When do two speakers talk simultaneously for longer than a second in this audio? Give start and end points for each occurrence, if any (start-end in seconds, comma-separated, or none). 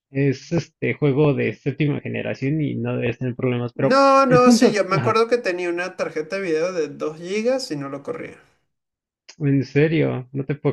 3.8-5.2